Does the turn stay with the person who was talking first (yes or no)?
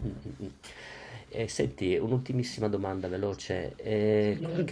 yes